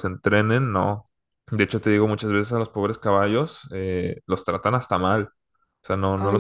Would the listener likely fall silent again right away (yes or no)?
yes